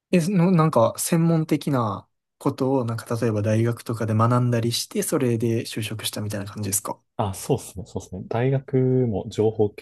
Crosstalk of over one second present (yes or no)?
no